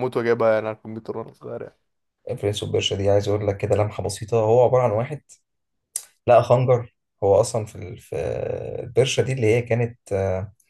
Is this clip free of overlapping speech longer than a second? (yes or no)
yes